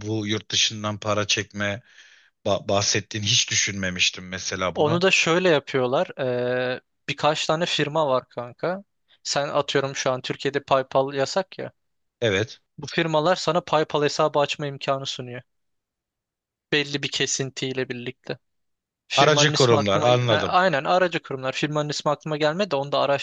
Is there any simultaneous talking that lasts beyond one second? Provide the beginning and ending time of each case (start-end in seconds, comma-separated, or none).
19.1-20.6